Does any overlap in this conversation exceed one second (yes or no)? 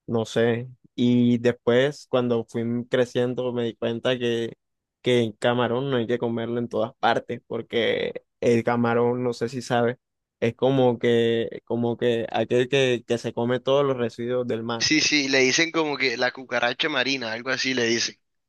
no